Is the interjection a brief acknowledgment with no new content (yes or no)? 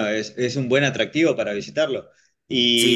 yes